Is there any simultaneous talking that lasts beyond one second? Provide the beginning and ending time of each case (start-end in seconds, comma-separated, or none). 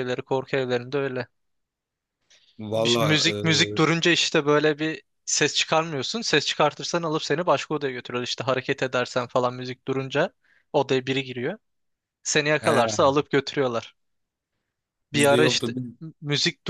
none